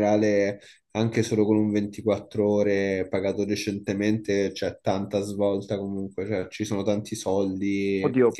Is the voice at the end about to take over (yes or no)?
yes